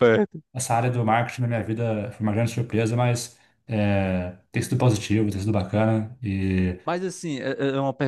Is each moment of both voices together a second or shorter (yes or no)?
yes